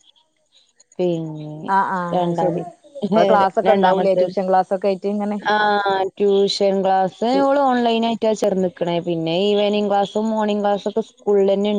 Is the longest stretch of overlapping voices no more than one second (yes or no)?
yes